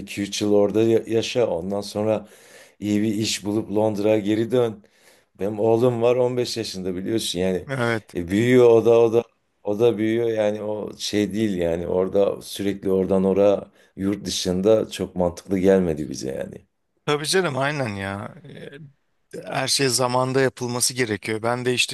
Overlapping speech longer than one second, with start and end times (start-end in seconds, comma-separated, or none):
none